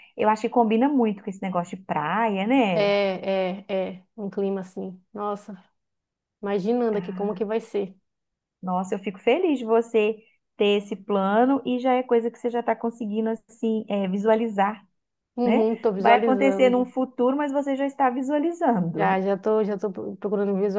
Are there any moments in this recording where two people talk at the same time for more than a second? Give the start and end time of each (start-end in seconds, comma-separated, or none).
15.4-16.9